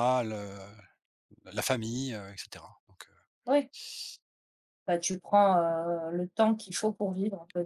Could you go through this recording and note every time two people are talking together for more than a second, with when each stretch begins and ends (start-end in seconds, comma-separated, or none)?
none